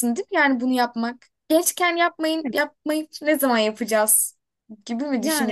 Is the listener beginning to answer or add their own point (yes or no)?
yes